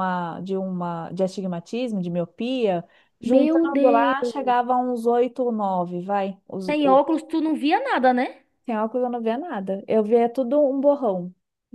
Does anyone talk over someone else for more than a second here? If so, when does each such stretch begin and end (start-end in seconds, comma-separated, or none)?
3.2-4.7